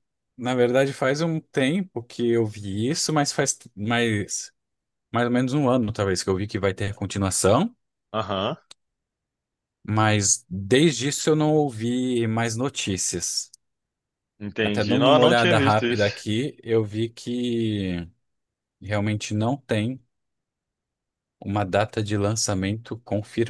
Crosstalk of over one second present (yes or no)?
yes